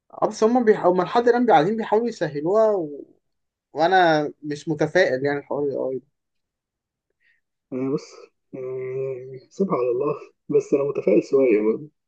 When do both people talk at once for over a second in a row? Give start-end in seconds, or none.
none